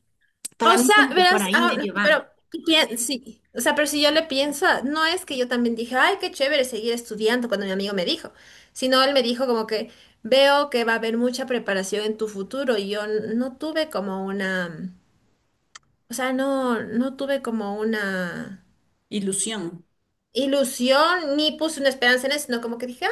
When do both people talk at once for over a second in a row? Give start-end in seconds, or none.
0.6-2.2